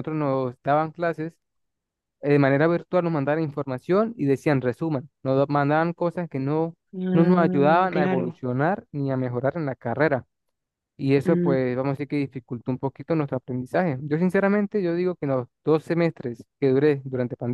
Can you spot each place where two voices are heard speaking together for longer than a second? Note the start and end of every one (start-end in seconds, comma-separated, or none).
7.1-8.4